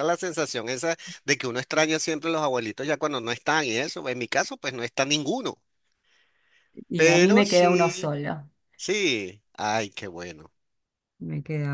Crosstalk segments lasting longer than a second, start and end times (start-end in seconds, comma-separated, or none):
7.0-8.2